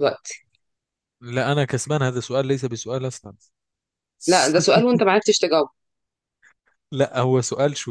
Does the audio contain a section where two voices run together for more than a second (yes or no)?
no